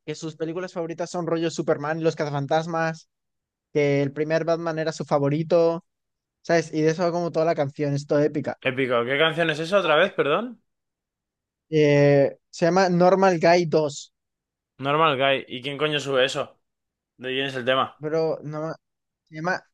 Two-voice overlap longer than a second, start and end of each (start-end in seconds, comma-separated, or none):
none